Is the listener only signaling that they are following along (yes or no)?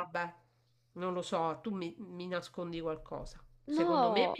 yes